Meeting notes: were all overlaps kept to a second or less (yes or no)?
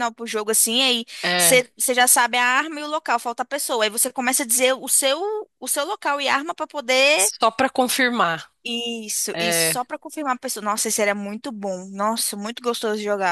yes